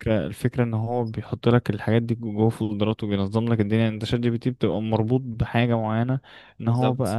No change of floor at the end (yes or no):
yes